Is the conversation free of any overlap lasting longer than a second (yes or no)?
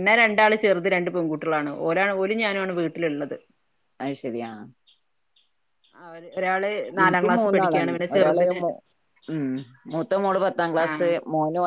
no